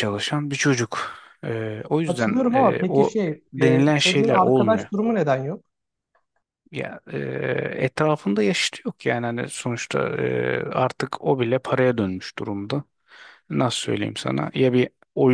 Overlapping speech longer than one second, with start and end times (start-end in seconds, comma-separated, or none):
2.0-4.9